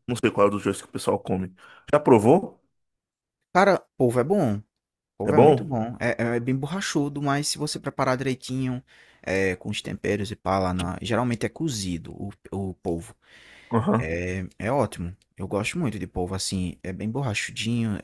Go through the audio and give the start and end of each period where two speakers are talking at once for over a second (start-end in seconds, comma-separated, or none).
none